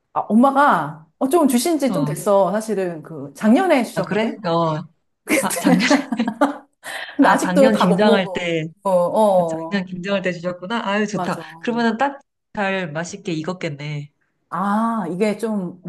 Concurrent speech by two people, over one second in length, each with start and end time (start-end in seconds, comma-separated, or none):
7.2-8.7